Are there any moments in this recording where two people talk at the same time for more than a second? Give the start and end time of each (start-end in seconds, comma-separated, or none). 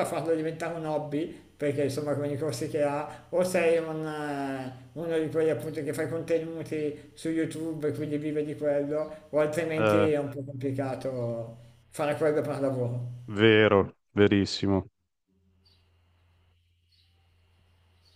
none